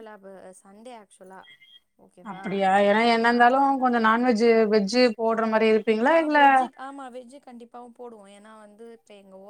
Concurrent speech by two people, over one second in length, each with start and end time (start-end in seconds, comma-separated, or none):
none